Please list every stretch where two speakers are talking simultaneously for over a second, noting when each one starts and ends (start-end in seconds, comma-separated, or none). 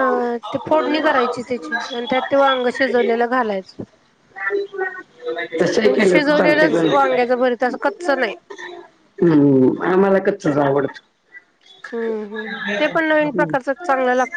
5.8-7.3